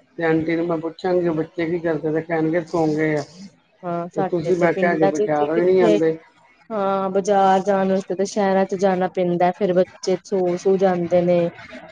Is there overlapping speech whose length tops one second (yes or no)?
yes